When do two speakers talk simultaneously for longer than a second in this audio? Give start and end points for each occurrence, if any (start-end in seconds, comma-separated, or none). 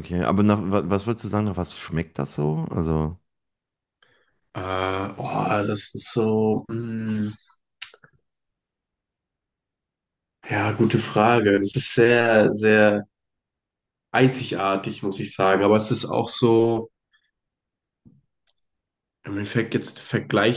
none